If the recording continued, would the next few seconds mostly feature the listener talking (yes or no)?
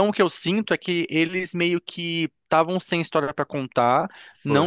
no